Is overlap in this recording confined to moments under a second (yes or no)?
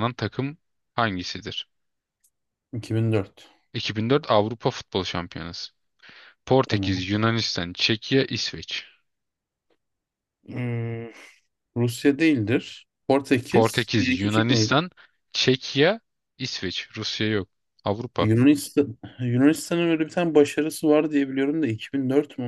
no